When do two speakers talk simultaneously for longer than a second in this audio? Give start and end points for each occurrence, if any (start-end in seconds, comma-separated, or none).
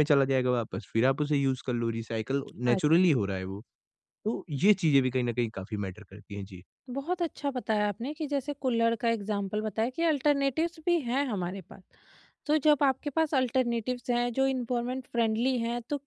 none